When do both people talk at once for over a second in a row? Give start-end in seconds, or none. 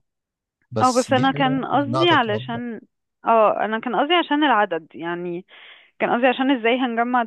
0.8-2.6